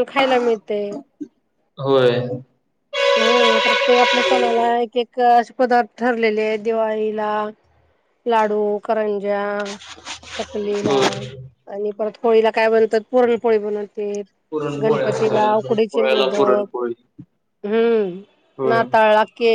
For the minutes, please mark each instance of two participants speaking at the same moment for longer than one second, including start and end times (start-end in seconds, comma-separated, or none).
14.8-16.6